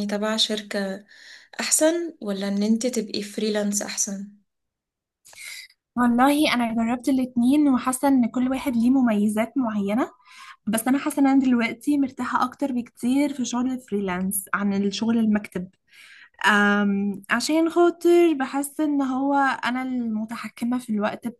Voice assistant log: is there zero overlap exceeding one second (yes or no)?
yes